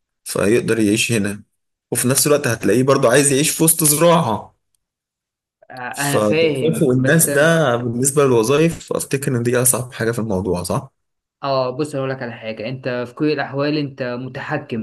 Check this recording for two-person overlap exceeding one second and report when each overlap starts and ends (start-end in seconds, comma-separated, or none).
5.9-7.6